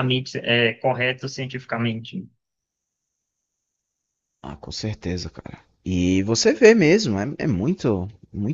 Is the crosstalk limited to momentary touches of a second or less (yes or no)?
yes